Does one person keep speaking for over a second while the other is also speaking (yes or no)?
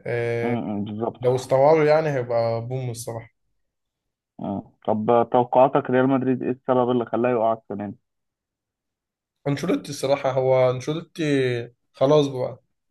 no